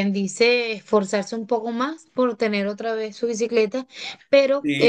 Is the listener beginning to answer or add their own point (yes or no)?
yes